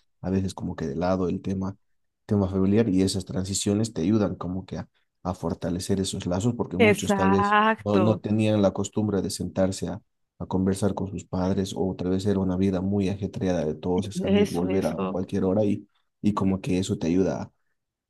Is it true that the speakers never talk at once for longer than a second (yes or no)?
no